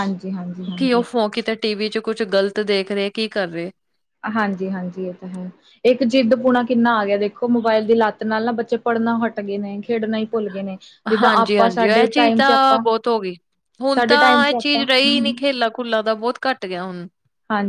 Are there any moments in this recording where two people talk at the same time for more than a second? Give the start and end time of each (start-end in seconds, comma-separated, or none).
11.2-12.8, 13.9-15.4